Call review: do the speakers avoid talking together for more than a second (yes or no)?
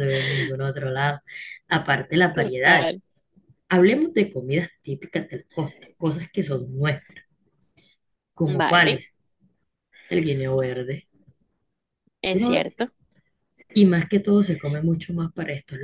yes